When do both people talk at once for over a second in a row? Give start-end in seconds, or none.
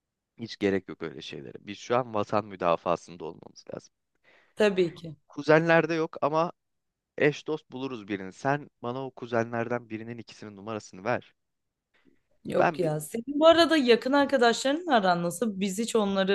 none